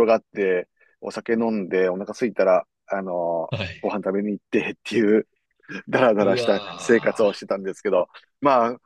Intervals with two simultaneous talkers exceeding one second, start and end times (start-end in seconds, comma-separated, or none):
6.2-7.5